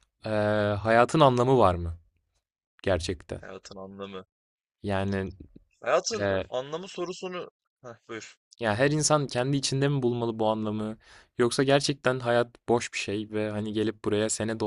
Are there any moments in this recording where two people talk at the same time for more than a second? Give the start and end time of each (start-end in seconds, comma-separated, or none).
none